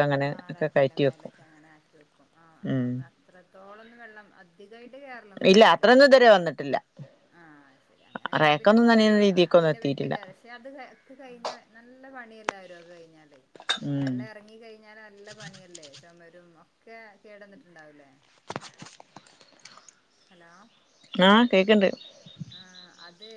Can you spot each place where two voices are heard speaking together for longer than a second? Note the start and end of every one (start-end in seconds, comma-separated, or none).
8.4-10.2